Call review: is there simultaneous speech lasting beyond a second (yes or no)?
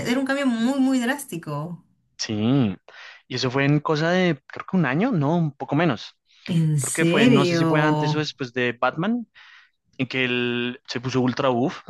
yes